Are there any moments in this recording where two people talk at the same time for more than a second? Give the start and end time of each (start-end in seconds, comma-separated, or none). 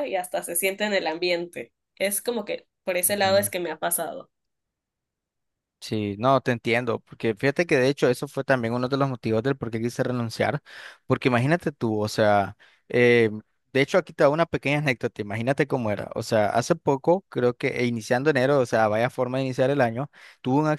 none